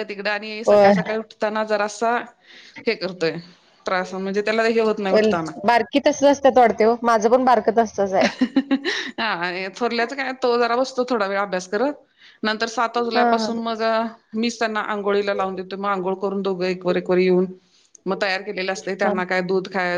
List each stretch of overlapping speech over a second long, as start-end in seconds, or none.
none